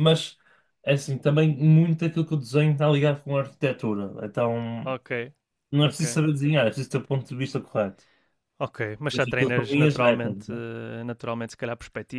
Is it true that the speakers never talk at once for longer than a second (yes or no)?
no